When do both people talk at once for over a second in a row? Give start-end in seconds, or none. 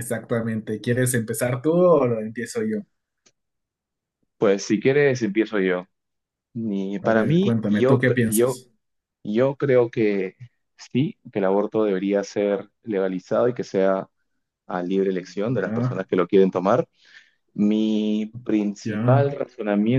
7.0-8.6